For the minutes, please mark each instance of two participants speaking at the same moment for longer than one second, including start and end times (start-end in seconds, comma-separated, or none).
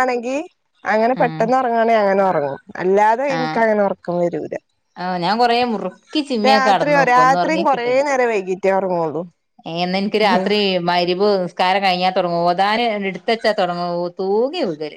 6.5-7.9